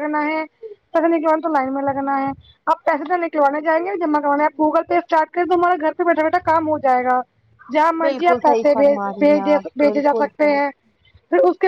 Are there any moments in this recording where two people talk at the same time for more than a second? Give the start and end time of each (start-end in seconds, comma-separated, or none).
8.1-10.6